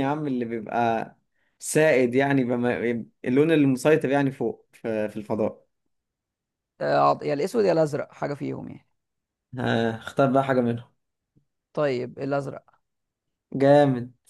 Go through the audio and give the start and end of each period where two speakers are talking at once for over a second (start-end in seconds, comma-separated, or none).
none